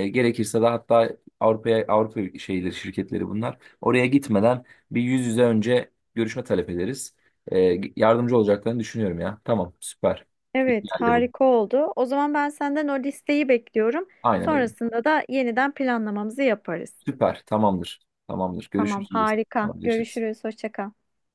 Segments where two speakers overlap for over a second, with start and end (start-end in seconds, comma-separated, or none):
18.8-20.2